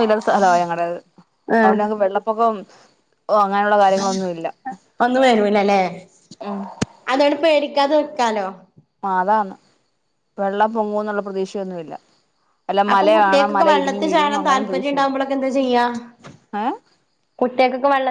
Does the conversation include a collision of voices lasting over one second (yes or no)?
yes